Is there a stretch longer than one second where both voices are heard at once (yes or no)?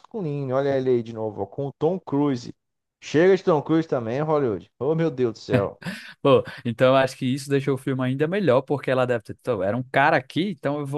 no